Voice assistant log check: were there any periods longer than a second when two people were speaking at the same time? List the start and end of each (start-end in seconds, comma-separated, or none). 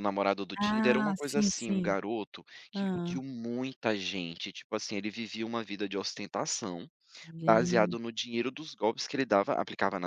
0.6-2.0